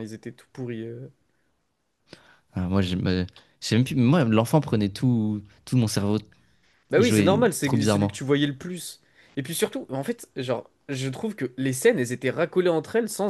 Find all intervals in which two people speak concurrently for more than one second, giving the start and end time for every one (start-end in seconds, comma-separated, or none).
6.9-8.2